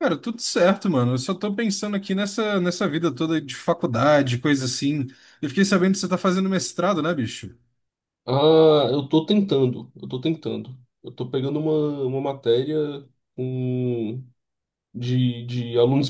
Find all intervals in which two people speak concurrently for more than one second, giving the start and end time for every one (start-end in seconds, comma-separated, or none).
none